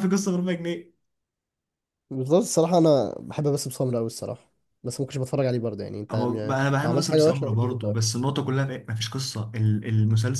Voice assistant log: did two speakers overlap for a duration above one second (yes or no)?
yes